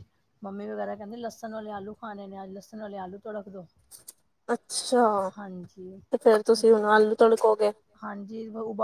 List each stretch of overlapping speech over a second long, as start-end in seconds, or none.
none